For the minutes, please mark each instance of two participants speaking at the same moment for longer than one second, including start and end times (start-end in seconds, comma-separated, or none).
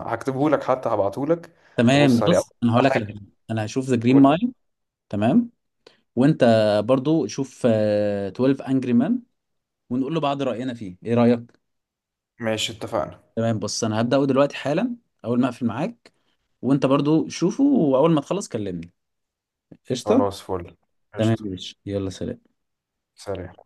1.9-3.2